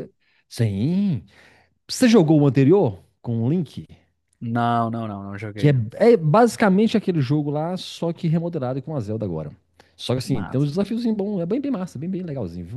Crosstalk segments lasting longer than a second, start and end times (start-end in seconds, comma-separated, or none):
none